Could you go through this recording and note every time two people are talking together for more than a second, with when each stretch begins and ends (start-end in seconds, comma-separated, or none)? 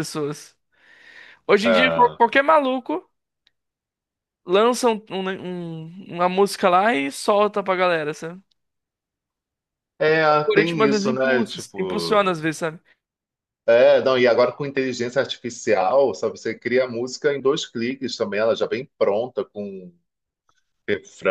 10.3-12.2